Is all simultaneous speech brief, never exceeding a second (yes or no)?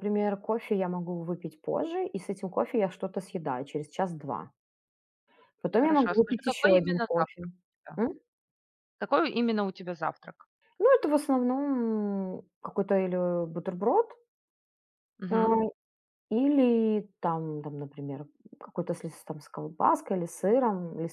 no